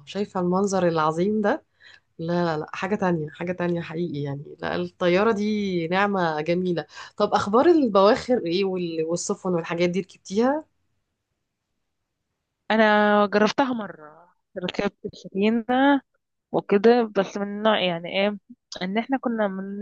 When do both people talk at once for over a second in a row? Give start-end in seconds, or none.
none